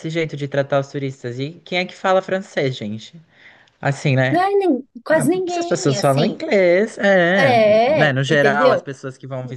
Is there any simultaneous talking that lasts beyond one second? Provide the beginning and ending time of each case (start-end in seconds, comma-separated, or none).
5.1-6.4, 7.3-8.9